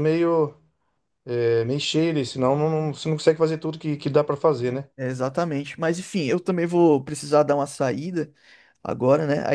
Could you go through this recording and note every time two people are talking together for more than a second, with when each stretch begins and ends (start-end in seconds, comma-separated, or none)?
none